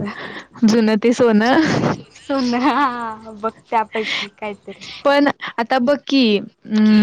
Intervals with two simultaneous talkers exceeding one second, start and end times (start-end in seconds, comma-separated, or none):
none